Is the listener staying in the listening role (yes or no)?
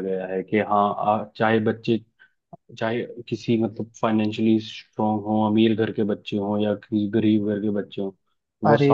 yes